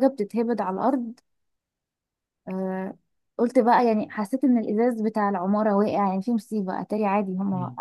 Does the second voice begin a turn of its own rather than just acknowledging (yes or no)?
yes